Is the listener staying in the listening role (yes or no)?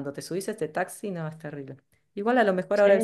yes